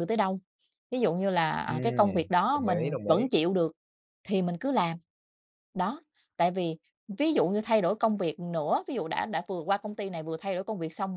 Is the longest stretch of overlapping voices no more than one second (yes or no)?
no